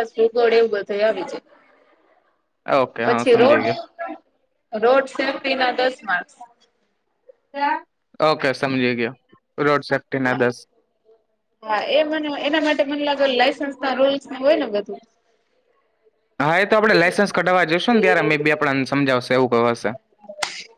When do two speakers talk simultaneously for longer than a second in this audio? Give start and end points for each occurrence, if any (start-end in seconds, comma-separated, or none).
none